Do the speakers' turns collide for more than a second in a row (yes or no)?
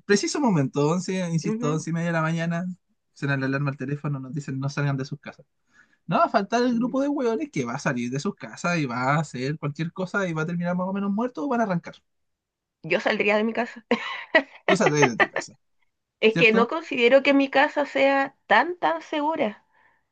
no